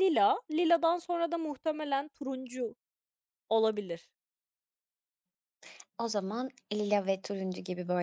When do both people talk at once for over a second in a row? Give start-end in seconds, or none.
none